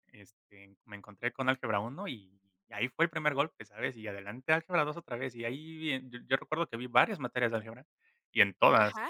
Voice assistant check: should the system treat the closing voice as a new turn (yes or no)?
no